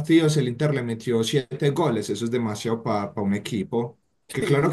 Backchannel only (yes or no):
yes